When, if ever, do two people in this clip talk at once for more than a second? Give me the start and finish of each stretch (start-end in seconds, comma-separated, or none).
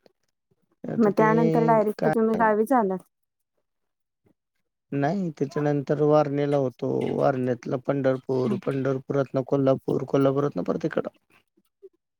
none